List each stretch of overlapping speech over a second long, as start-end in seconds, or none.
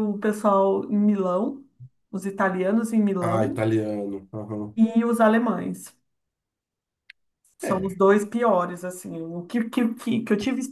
none